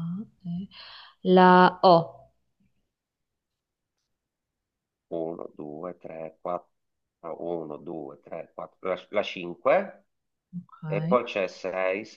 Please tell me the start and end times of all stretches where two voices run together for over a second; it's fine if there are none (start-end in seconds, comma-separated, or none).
none